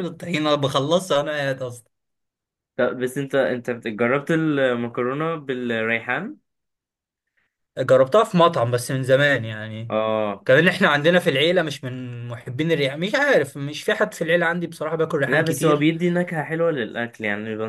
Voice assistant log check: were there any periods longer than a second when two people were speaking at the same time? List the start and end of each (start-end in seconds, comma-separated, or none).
none